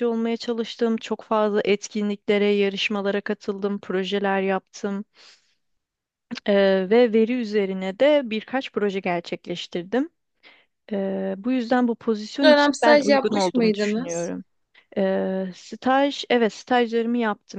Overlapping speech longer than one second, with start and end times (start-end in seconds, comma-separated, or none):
12.4-14.3